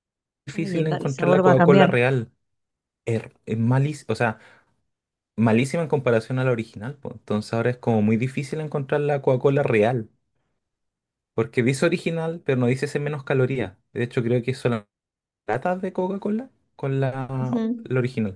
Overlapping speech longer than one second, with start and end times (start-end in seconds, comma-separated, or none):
0.6-1.9